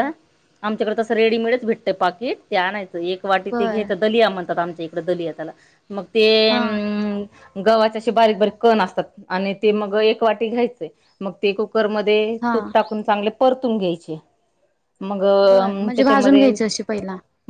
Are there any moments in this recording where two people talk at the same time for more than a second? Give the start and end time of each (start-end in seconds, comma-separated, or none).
none